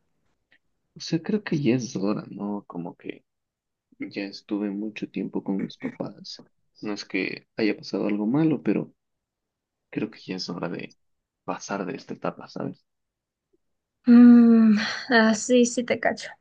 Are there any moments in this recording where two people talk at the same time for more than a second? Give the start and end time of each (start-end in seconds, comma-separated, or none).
none